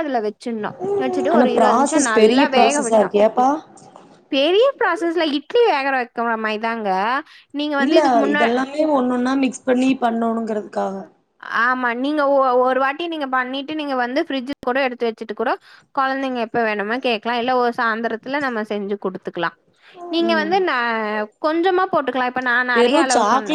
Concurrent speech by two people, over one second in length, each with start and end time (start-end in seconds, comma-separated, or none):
1.3-3.1